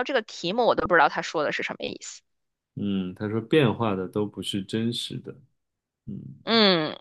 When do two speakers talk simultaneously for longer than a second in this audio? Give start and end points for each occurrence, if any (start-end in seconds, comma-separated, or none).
none